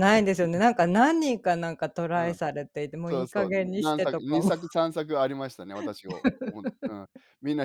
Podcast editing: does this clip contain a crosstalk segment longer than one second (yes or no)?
yes